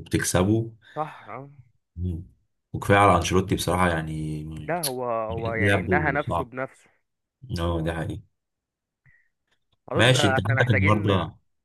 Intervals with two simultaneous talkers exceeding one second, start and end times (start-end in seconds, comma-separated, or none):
5.3-6.5, 9.9-11.1